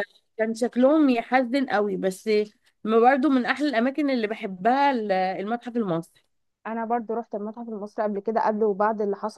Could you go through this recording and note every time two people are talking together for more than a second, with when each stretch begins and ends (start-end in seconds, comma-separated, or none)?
none